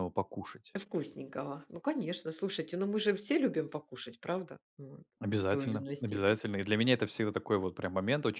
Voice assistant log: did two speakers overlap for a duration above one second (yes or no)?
yes